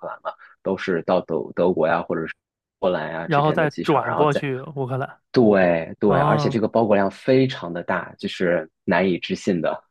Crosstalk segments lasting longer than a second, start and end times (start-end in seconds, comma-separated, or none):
3.2-4.4